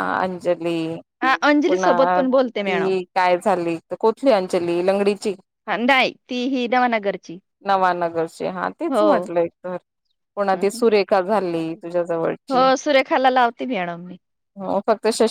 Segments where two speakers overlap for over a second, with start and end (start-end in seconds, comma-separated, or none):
1.7-2.9